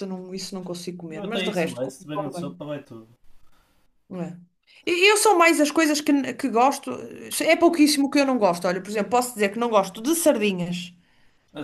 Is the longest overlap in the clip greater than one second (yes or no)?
yes